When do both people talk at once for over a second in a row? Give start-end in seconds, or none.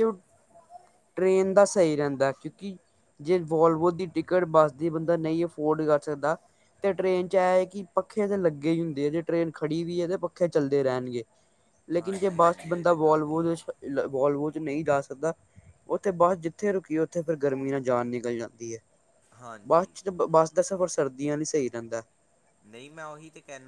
12.0-13.8